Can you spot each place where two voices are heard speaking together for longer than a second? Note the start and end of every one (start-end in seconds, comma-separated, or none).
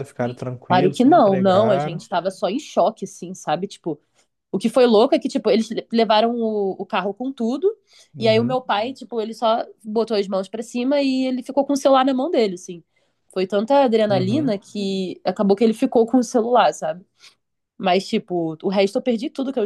0.7-2.0